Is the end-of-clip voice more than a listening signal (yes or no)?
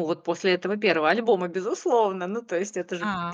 no